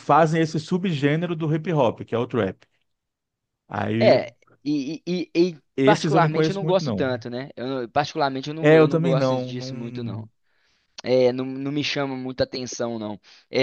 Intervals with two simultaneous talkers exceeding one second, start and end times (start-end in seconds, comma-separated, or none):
5.8-7.1, 8.6-10.3